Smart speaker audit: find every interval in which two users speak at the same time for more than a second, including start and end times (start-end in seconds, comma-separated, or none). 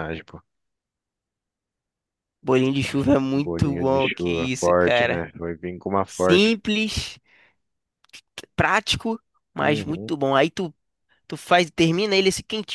3.3-5.2